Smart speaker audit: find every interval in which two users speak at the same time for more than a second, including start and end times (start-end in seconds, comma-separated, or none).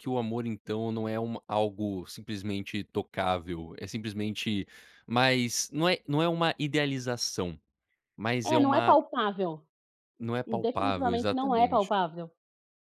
10.6-11.9